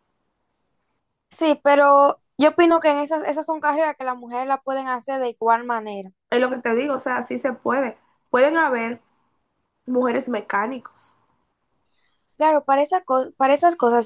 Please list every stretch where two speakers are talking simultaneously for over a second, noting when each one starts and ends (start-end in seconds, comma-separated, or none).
none